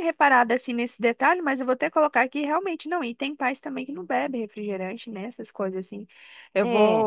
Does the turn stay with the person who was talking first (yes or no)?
yes